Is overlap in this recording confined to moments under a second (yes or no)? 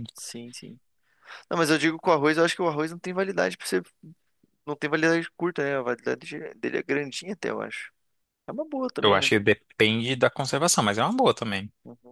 yes